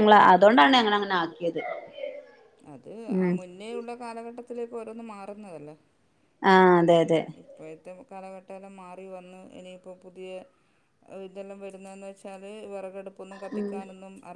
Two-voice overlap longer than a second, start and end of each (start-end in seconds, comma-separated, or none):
none